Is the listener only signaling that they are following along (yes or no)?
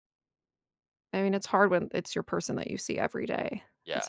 no